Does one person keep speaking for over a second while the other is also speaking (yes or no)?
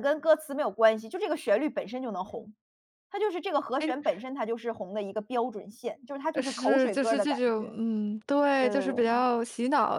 yes